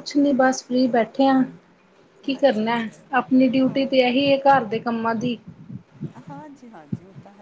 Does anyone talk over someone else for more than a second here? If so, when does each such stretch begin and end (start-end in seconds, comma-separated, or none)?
none